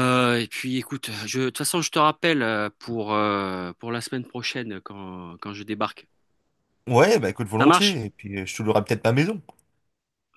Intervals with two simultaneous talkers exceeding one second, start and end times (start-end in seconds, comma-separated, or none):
none